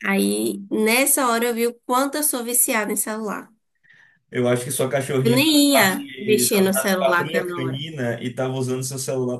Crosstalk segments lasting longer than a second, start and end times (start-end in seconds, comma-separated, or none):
5.2-7.8